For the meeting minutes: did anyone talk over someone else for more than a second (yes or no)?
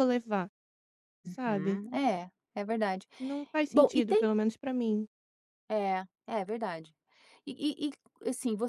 no